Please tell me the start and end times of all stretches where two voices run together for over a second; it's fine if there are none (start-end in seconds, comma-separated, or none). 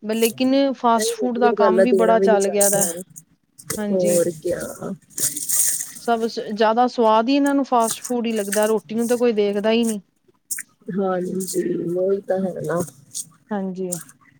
1.0-2.9